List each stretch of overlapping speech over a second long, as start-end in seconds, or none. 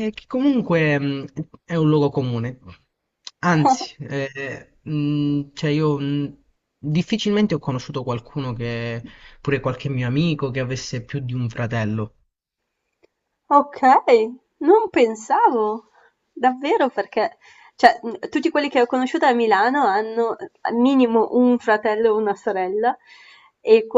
none